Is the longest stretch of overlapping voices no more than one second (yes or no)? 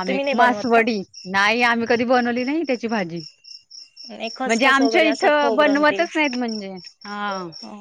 no